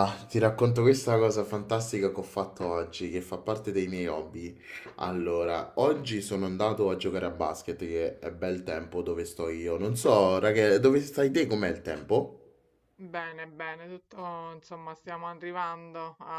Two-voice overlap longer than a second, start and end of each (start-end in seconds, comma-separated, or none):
none